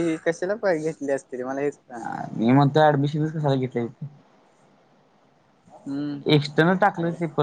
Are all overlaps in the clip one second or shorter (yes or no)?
yes